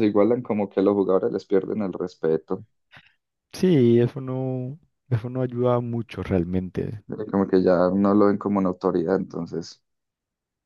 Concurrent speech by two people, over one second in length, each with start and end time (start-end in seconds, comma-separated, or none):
none